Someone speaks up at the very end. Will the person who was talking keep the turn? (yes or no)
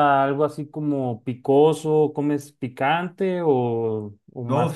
no